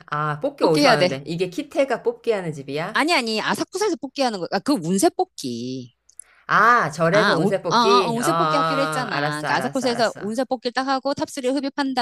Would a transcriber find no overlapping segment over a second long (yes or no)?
no